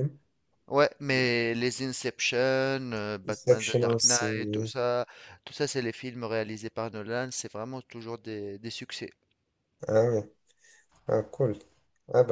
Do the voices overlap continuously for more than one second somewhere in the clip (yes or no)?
yes